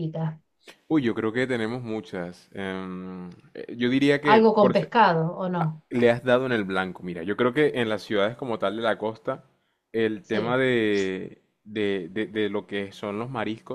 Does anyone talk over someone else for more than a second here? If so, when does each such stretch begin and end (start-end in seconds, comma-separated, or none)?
none